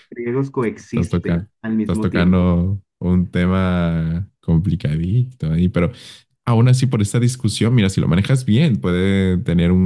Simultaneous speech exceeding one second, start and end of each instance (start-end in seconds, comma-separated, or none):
0.9-2.5